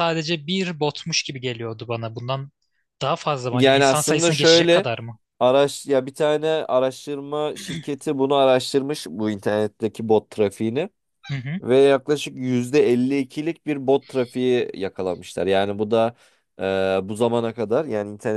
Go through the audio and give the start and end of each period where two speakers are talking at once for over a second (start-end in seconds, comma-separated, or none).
3.5-4.9